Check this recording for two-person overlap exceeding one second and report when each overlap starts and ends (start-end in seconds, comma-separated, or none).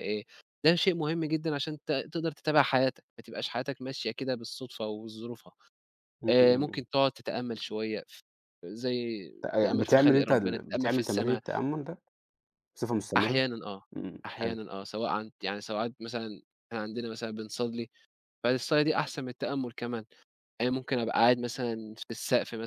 9.5-11.4